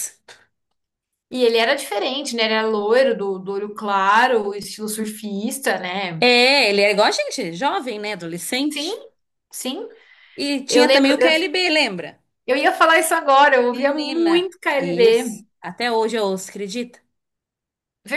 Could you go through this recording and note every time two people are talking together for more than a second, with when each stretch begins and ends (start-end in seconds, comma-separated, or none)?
13.7-15.4